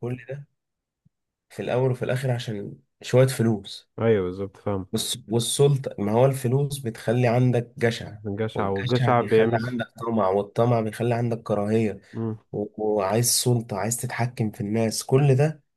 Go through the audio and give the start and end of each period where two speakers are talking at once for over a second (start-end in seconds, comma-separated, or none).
8.5-9.8